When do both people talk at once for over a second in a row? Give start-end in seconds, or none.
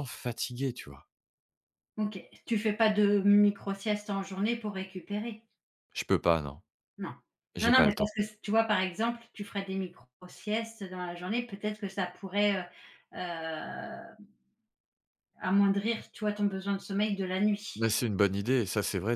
none